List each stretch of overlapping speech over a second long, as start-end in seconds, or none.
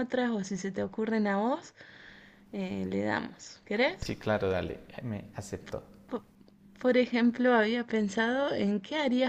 none